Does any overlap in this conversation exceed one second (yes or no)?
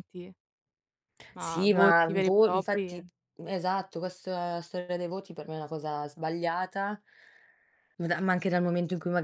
yes